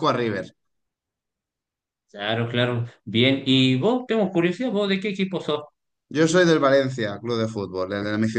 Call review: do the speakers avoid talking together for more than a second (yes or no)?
yes